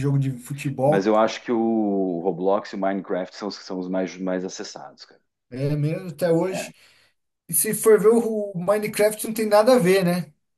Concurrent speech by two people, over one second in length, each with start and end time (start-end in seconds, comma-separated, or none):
none